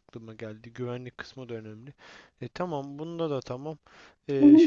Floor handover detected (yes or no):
yes